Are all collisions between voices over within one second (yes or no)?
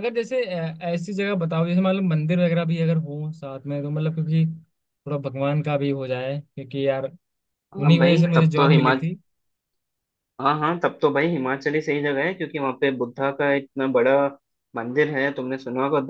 no